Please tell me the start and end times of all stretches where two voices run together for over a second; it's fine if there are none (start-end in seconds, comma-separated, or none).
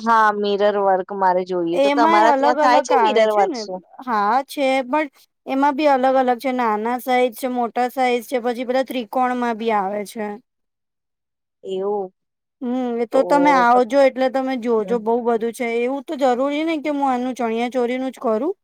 1.8-3.6